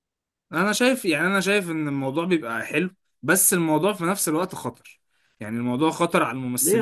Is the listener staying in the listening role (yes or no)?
no